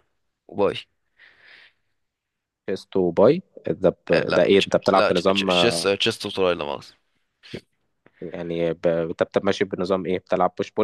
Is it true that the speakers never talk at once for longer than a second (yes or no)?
no